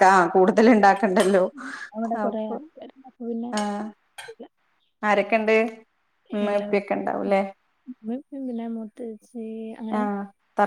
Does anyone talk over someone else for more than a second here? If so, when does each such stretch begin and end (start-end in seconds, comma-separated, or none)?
none